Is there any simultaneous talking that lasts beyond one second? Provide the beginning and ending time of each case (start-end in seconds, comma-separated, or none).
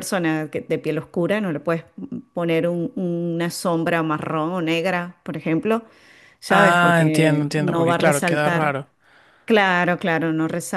6.5-8.7